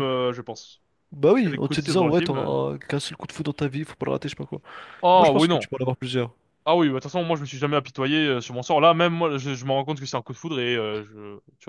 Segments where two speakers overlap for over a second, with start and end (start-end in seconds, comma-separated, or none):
1.4-2.6